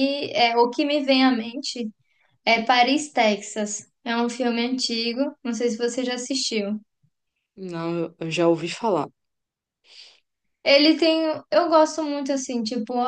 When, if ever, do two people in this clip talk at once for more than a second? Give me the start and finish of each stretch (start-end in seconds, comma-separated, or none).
none